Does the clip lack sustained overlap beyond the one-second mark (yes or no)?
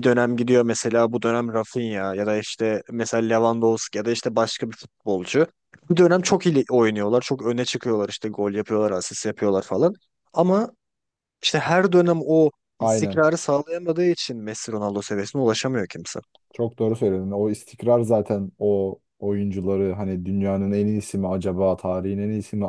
yes